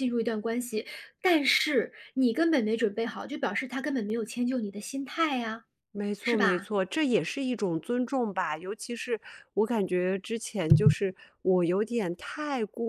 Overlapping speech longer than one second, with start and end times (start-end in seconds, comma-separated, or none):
none